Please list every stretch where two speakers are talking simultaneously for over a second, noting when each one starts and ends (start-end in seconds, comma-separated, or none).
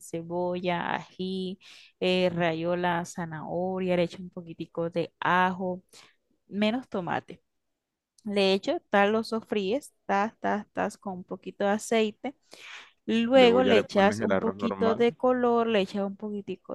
13.3-15.1